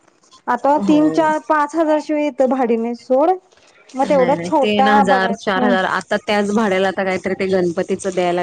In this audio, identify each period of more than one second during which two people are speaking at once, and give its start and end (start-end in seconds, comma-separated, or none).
4.0-5.7